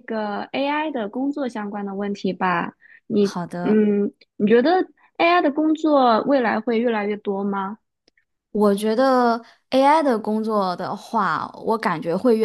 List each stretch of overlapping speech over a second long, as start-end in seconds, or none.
none